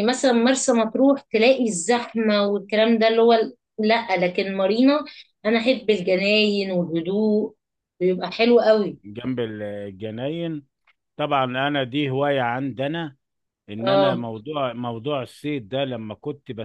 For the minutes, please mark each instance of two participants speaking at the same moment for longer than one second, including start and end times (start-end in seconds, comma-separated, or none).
none